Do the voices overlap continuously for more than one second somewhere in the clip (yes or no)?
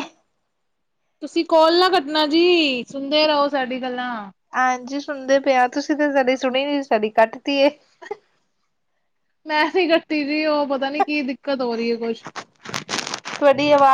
no